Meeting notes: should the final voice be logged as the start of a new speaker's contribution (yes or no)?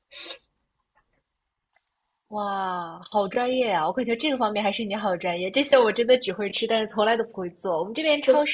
no